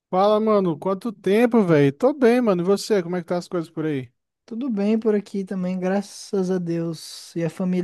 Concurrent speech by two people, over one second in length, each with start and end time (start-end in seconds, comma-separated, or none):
none